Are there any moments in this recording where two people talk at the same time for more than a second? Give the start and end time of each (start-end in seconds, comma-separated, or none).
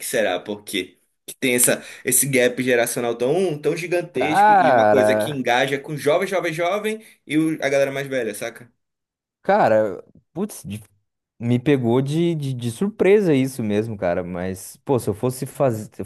4.1-5.4